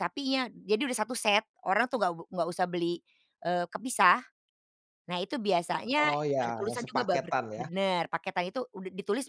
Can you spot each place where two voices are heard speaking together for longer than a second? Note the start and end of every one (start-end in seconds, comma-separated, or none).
6.0-7.7